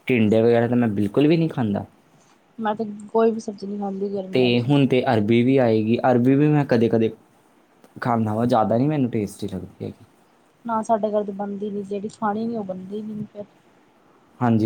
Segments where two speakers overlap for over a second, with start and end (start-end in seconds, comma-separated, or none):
none